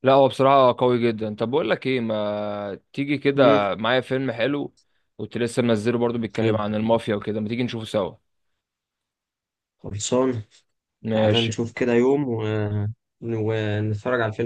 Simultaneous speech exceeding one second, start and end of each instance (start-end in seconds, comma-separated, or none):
none